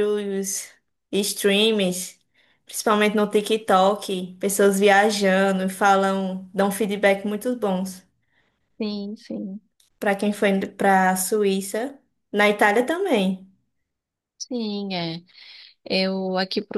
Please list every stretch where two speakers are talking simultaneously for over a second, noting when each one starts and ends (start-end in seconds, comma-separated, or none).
none